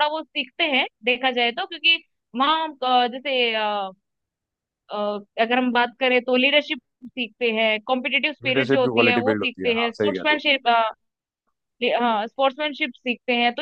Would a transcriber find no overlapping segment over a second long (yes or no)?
no